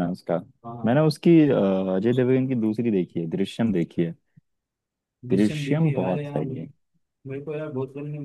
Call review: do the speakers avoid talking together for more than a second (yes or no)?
no